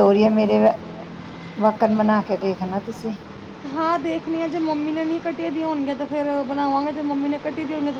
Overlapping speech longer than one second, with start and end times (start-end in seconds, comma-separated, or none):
none